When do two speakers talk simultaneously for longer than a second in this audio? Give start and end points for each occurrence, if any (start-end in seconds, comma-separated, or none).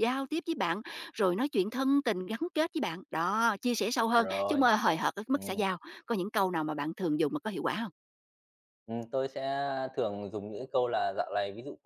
none